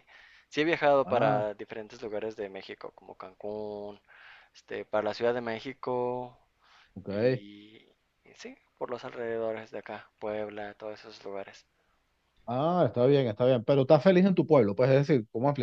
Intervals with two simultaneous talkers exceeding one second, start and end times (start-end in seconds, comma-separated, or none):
none